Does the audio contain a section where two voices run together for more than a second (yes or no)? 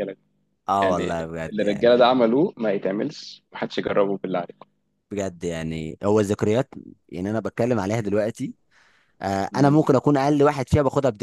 yes